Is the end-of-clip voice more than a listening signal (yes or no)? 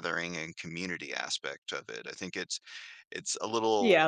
yes